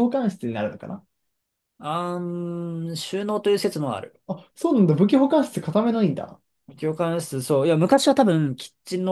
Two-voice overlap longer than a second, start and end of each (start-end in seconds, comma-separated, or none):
none